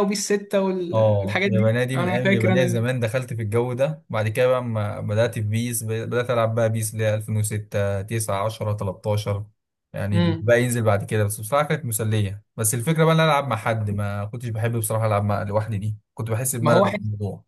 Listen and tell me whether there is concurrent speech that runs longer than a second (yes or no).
yes